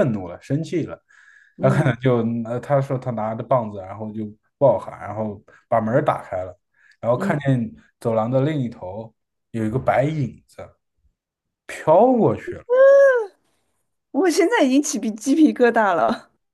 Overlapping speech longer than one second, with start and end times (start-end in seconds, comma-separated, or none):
none